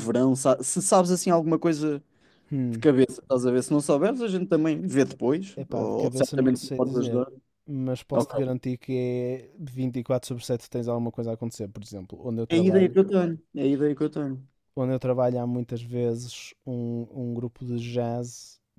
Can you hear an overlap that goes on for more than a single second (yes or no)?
yes